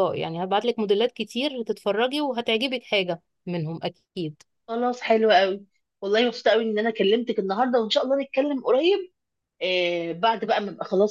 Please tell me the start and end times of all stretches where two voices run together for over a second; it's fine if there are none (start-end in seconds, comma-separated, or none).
none